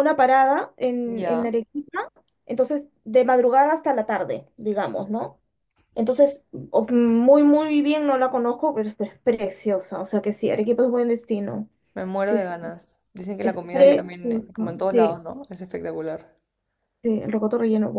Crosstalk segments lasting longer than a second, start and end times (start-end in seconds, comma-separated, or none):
13.4-15.2